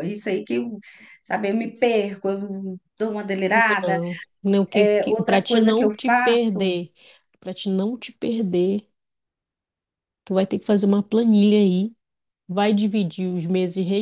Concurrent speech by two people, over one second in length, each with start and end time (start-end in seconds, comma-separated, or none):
4.7-6.7